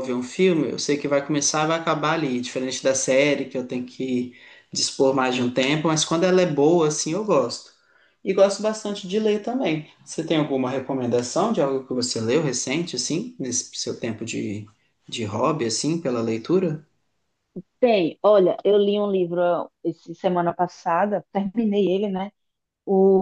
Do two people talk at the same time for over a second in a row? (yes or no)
no